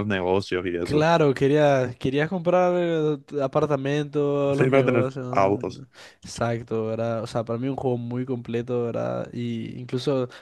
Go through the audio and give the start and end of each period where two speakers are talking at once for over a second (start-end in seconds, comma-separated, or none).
4.5-5.8